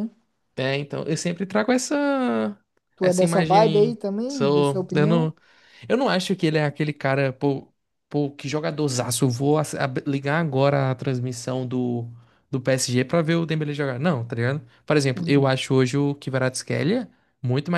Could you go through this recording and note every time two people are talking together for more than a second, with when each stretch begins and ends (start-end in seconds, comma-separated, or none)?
3.0-5.3